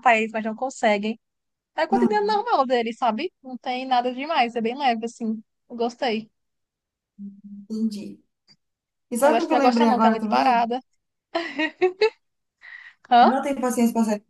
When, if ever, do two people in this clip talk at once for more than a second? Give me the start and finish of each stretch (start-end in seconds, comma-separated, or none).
9.2-10.7